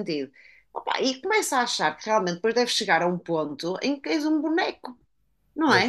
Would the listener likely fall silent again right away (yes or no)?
yes